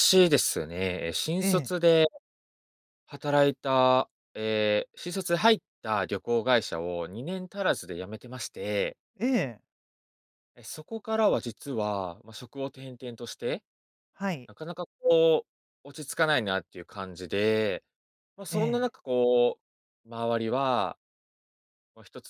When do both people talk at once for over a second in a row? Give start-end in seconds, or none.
none